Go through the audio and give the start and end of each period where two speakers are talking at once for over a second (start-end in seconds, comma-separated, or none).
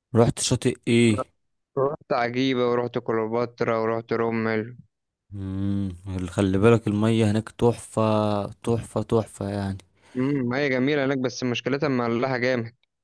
none